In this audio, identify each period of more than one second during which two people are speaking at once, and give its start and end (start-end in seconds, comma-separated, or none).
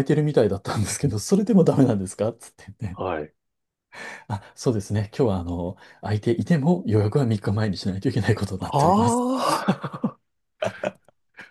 none